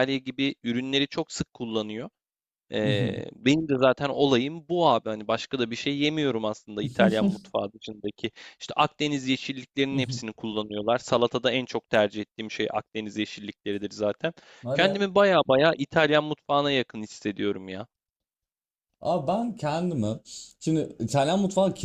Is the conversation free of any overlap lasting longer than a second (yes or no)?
yes